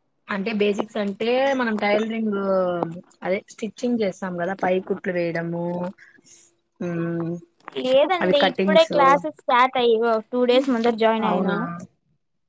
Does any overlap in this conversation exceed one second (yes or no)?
no